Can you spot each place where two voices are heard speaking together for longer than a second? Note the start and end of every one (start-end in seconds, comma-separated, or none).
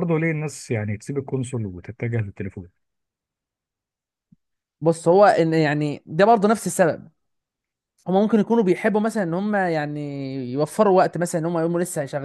none